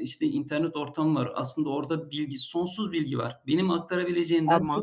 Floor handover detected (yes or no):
no